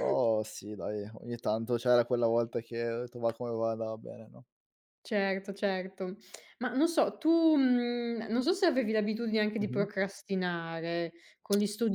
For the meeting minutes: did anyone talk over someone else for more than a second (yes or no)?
no